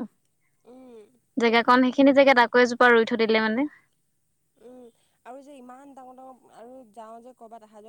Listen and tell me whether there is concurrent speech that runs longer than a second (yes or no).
no